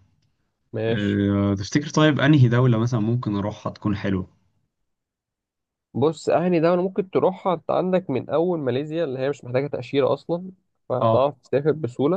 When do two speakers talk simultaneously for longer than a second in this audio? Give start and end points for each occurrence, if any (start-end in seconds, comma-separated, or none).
none